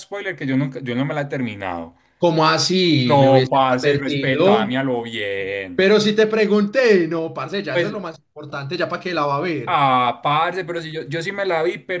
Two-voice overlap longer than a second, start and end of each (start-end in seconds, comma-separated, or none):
3.0-4.7